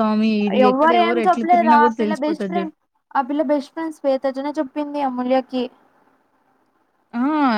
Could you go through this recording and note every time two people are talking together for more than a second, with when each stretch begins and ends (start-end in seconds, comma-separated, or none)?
0.7-2.7